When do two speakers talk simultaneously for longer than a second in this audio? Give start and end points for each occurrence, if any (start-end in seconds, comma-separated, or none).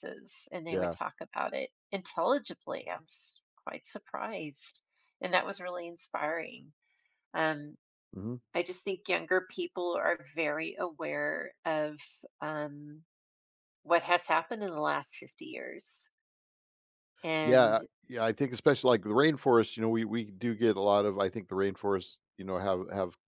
none